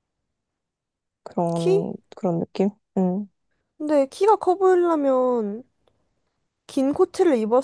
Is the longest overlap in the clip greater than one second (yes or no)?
no